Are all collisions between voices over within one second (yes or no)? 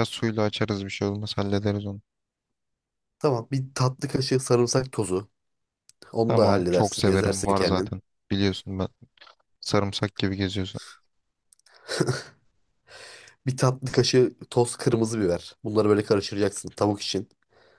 no